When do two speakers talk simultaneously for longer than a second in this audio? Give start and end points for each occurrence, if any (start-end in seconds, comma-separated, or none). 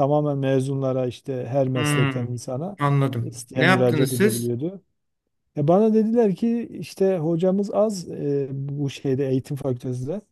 3.2-4.5